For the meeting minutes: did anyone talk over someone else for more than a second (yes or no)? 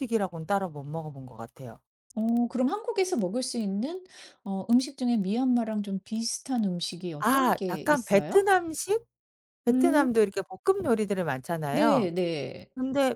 yes